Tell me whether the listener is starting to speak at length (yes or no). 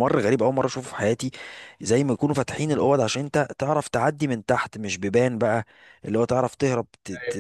no